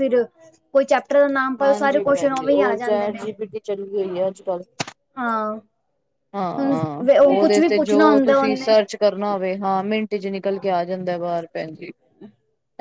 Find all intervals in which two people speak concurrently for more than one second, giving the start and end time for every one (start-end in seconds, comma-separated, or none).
1.6-3.2, 6.6-8.8